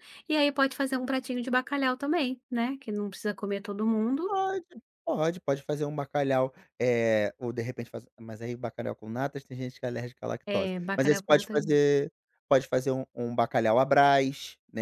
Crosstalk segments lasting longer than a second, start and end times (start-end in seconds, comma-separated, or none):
10.4-11.8